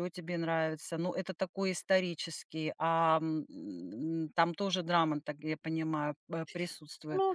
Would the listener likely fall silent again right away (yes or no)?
no